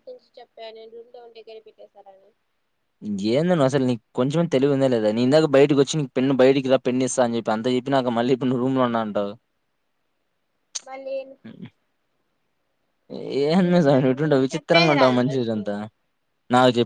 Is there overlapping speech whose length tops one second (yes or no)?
yes